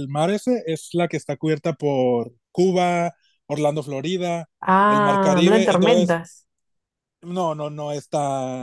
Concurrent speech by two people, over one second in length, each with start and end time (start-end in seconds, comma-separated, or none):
4.9-6.2